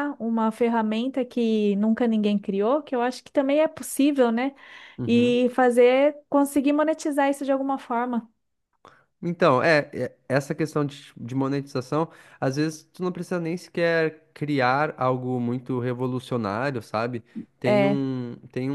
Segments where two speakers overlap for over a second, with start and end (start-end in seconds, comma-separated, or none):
none